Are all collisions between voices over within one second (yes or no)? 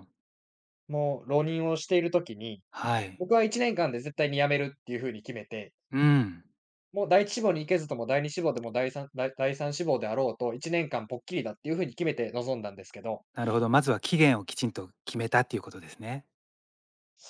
yes